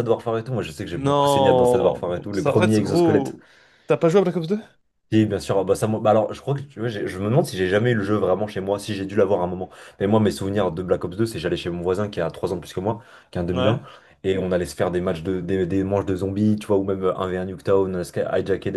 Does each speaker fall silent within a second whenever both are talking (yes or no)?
no